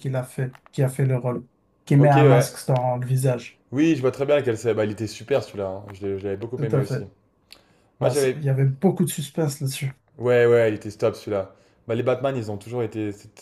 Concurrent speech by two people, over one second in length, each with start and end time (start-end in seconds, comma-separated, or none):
none